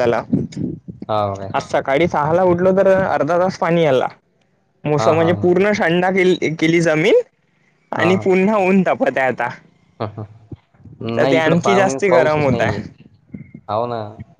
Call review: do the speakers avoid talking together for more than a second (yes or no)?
no